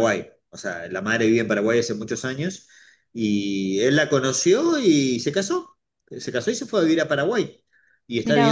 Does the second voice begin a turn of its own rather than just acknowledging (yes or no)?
no